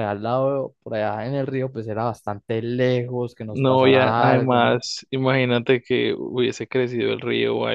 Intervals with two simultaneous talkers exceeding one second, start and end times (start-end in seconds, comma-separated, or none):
3.5-4.8